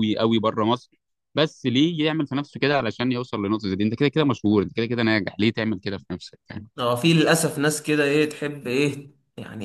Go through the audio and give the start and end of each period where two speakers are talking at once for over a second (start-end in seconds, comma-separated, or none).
none